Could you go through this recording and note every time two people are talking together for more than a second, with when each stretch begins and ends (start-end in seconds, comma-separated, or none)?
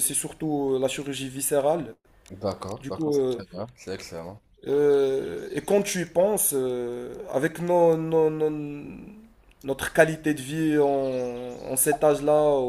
none